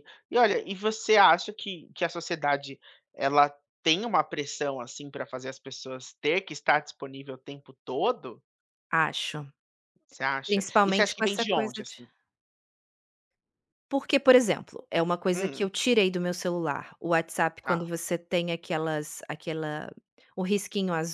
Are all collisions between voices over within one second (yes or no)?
no